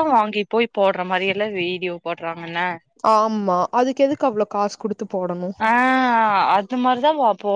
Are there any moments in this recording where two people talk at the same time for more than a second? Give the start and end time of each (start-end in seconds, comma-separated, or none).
none